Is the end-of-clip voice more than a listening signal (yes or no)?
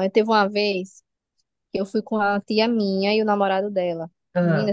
no